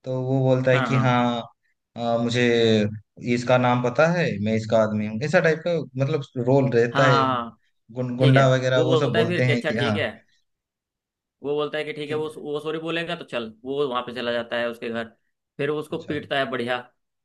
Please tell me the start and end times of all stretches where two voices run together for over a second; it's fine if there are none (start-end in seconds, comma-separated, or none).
8.2-10.0